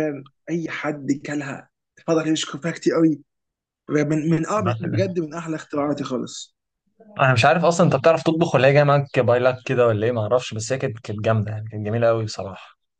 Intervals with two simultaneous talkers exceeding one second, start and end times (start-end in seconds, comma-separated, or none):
none